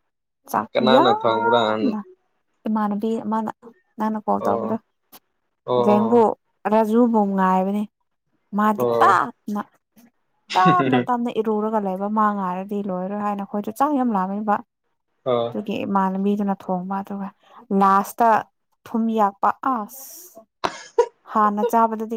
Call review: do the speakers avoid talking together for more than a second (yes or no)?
yes